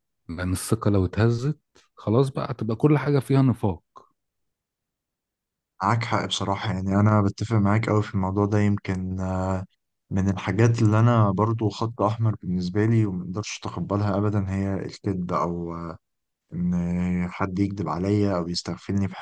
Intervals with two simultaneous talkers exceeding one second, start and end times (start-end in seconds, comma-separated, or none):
none